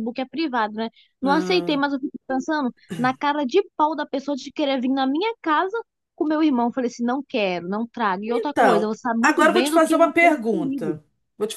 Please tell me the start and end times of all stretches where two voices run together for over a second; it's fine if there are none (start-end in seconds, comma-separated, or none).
8.3-11.0